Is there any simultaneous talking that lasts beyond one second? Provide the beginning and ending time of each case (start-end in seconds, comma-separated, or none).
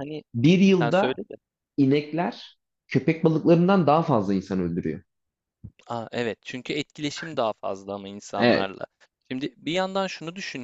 none